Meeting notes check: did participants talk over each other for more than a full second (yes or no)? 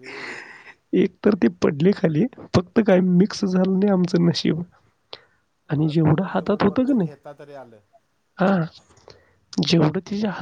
yes